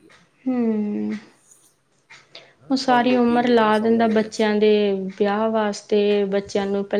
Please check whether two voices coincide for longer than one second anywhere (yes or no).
yes